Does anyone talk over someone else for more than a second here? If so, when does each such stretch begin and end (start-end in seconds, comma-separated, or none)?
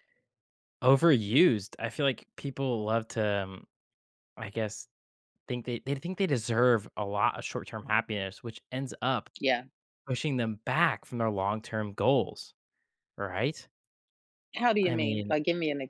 none